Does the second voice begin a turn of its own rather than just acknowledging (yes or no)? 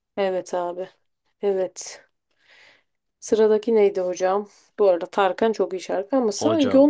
no